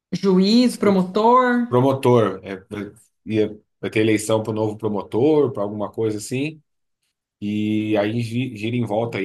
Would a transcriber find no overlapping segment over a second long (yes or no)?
yes